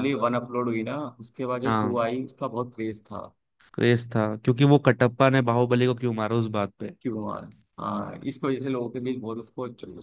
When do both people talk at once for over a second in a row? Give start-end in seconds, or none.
none